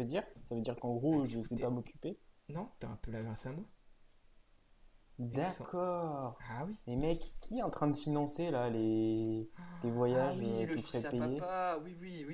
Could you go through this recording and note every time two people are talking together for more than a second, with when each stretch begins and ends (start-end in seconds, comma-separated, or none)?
10.1-11.5